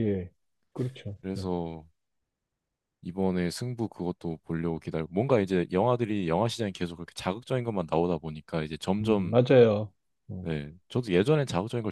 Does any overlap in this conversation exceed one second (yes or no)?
no